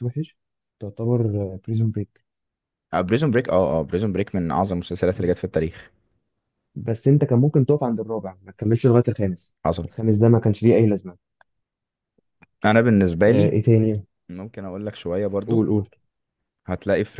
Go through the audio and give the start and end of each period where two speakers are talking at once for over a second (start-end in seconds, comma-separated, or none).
none